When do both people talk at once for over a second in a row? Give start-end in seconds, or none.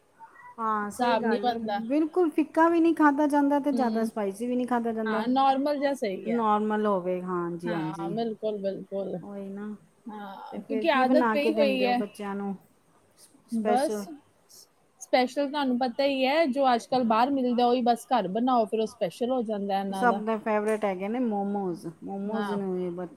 10.5-12.0